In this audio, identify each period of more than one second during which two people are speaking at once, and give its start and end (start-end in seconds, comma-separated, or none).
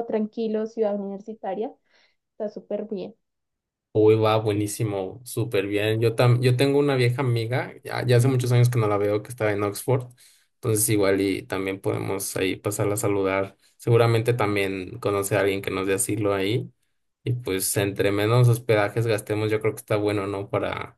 none